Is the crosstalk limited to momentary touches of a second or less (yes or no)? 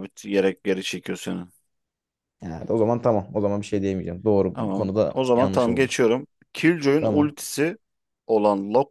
no